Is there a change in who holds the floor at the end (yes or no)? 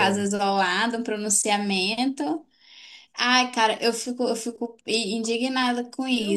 yes